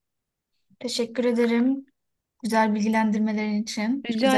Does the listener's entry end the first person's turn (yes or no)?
yes